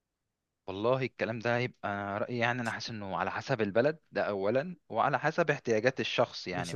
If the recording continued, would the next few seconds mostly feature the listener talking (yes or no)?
yes